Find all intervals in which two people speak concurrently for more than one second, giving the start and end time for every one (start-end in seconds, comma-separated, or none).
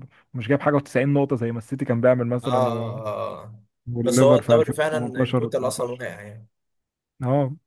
4.0-6.1